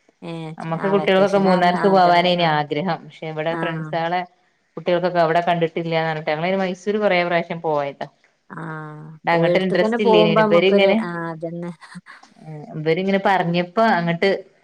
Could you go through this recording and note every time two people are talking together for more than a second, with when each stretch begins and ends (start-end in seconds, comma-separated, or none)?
0.6-2.5